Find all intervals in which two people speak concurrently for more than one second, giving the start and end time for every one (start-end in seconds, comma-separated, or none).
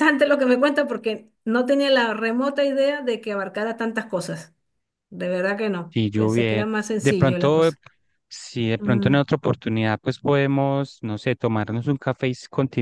5.9-7.7